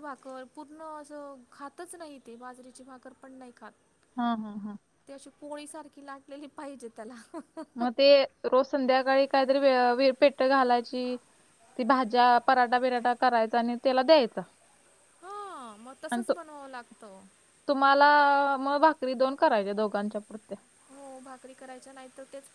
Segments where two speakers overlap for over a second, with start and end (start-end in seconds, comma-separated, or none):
none